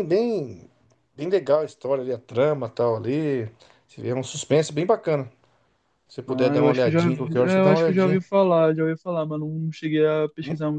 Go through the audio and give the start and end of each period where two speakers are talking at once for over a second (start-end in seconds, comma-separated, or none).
6.3-8.2